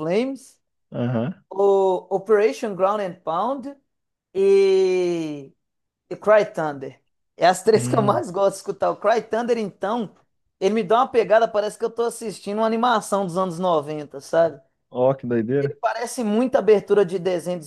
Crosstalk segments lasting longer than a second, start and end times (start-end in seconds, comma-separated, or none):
none